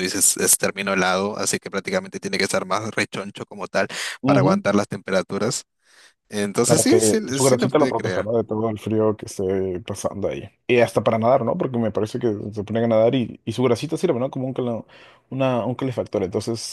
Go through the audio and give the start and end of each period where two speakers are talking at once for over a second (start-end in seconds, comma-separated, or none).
6.7-8.3